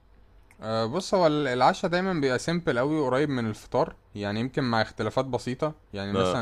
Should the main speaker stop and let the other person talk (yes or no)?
no